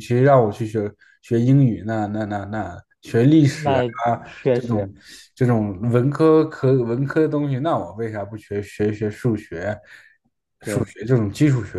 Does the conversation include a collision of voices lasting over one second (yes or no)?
no